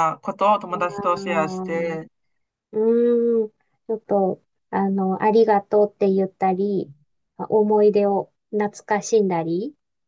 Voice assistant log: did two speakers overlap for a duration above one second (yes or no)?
yes